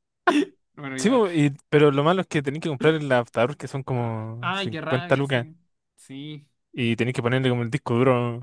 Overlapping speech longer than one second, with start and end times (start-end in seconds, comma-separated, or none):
4.0-5.5